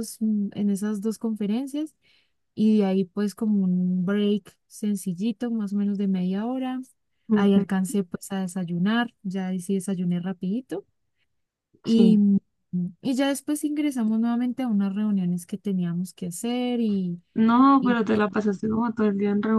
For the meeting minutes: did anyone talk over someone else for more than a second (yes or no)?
no